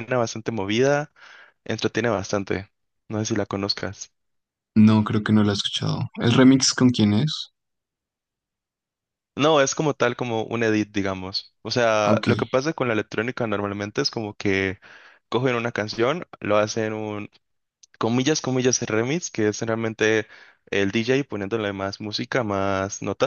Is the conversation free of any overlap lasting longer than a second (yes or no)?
yes